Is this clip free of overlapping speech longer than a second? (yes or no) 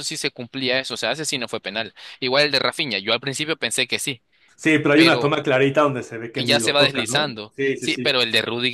no